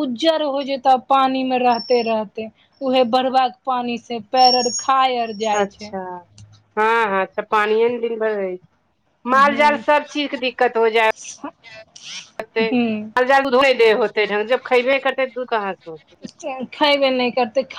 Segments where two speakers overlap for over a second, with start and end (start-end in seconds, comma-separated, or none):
none